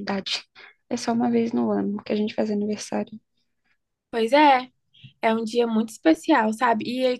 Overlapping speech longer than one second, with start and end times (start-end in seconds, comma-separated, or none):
none